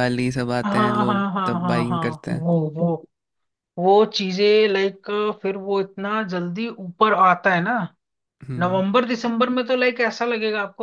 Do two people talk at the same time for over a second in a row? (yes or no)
yes